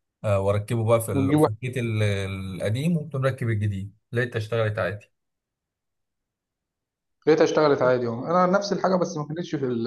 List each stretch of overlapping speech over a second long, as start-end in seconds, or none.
none